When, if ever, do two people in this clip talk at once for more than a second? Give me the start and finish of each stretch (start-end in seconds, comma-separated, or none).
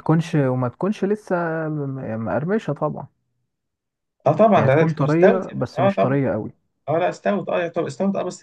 4.5-6.2